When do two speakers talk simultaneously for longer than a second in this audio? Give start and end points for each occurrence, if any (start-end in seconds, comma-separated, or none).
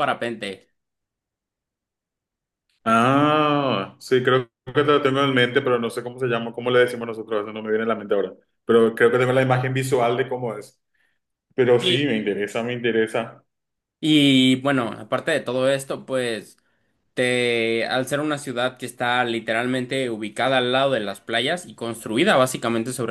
none